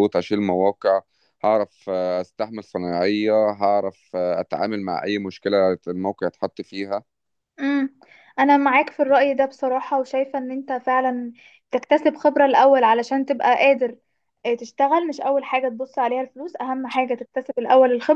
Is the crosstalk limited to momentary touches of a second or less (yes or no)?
yes